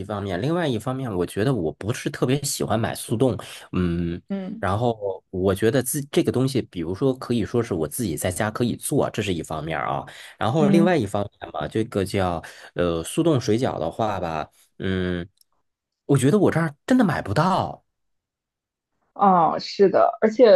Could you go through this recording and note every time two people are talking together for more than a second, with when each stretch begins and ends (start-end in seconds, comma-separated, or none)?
none